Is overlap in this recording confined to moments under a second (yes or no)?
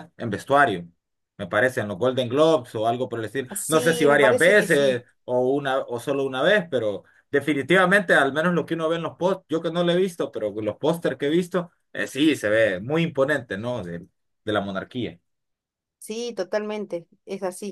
no